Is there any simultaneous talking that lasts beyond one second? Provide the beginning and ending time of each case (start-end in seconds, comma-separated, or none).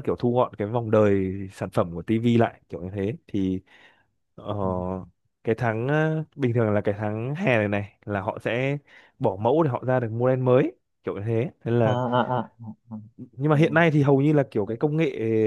none